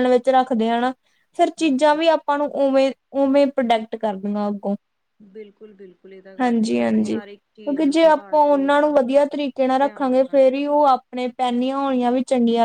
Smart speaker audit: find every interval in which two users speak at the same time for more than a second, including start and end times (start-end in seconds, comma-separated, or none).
6.4-8.7